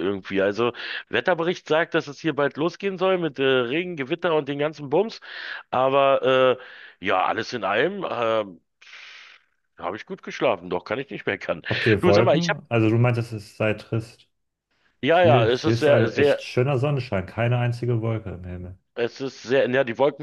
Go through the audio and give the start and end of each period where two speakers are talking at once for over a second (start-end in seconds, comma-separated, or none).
15.1-16.5